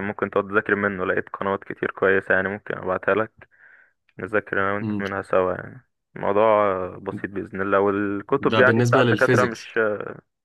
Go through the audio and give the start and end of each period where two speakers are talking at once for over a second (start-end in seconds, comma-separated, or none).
8.4-9.7